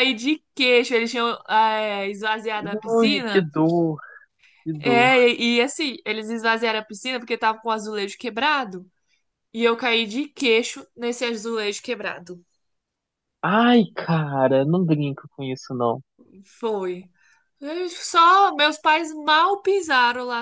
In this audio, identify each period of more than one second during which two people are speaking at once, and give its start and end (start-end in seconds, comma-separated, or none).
none